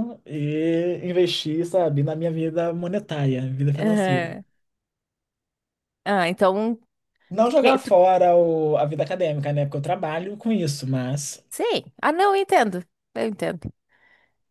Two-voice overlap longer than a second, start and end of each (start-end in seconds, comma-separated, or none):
none